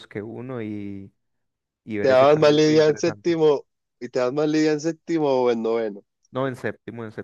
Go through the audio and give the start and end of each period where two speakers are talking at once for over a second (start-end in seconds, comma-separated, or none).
2.0-3.4